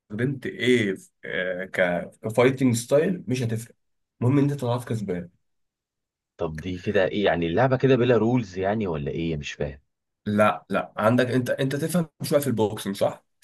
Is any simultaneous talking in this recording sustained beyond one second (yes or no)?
no